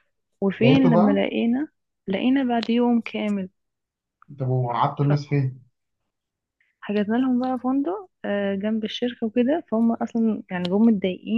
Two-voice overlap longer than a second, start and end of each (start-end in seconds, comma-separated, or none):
none